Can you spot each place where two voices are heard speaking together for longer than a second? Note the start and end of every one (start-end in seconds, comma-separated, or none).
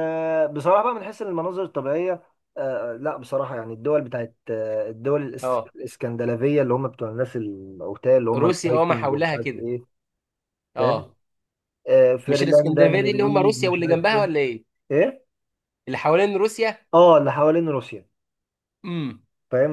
8.4-9.7, 12.3-14.3